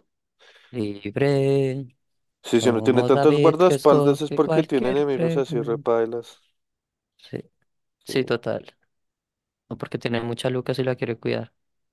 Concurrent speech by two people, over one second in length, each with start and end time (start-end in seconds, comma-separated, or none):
2.6-5.9